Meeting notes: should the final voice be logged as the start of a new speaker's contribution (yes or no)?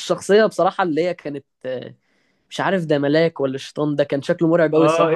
yes